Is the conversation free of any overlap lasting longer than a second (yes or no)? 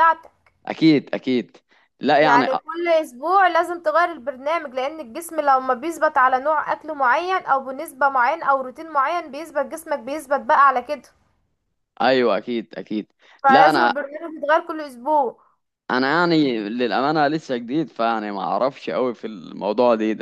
yes